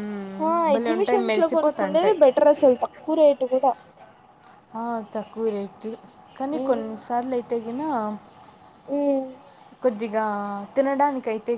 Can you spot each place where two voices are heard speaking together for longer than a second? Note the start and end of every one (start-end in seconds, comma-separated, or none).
0.7-2.2